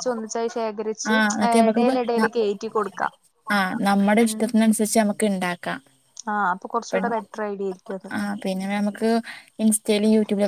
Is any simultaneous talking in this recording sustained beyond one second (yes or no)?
no